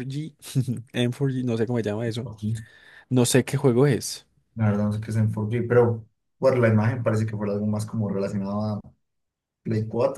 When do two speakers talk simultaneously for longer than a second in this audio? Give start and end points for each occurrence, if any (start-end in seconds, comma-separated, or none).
none